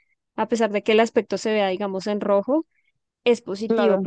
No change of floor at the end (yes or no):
yes